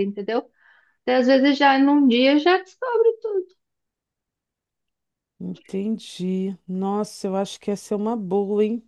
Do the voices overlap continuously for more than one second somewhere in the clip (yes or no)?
no